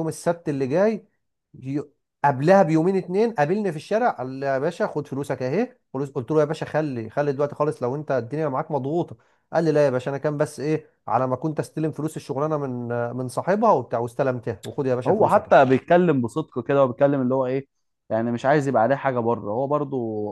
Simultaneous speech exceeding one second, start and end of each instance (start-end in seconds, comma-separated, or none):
none